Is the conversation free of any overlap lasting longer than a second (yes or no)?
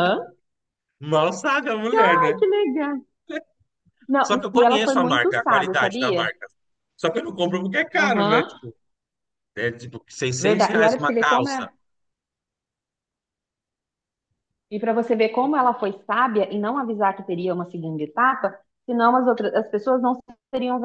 no